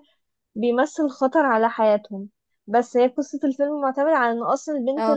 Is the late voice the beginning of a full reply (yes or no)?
no